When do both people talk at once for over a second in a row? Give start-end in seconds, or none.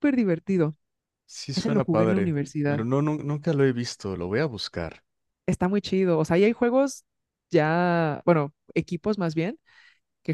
1.6-2.9